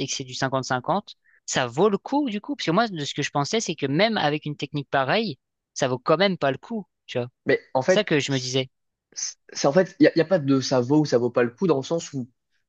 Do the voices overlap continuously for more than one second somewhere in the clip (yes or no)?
no